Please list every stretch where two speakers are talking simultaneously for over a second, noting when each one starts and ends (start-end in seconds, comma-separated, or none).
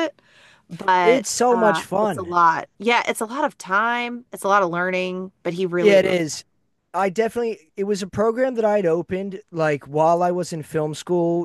1.0-2.3